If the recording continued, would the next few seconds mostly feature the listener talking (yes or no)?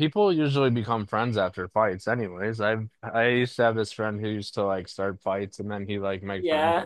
yes